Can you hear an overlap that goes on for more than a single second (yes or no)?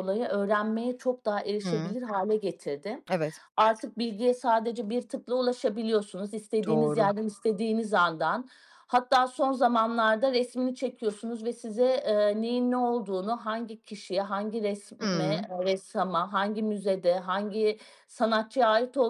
no